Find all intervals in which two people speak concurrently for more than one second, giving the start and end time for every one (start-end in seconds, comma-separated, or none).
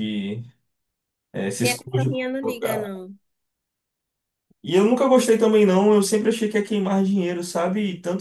1.6-2.9